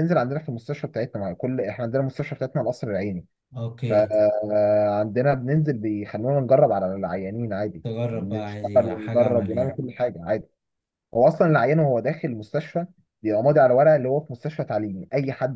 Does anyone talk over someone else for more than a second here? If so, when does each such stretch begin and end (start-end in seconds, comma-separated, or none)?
7.8-9.8